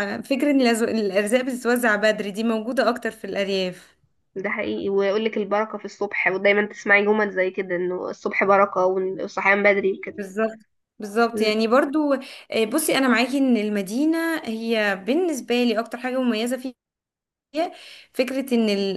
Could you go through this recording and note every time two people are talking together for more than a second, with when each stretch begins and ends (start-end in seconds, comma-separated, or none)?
none